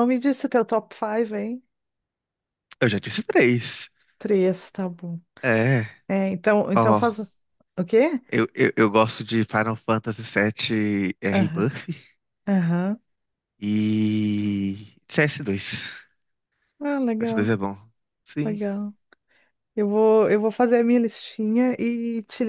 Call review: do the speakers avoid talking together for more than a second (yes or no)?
yes